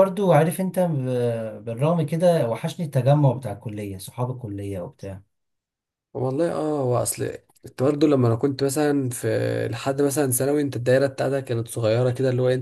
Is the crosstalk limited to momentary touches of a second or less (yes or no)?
yes